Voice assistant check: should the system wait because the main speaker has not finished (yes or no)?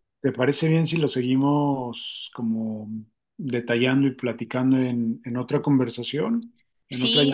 no